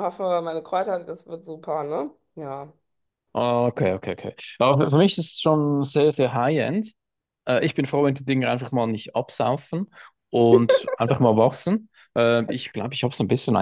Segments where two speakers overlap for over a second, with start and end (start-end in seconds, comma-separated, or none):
none